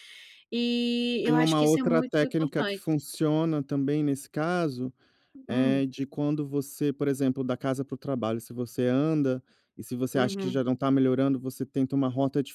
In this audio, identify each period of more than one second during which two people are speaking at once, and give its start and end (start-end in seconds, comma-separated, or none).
1.2-2.9